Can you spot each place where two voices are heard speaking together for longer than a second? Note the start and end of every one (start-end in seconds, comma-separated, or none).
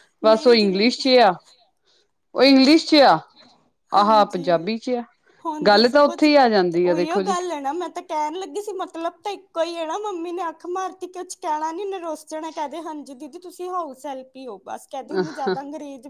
none